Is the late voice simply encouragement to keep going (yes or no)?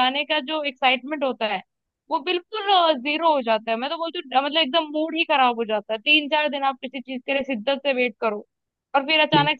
yes